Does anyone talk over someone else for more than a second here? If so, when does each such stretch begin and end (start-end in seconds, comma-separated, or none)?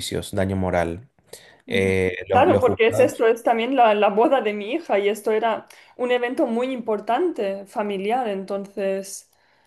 1.7-3.2